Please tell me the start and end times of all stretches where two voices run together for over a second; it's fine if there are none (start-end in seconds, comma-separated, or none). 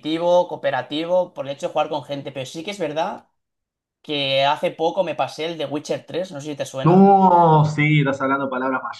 none